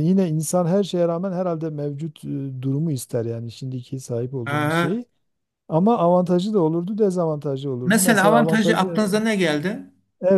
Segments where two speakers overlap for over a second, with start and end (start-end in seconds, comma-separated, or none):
7.8-9.0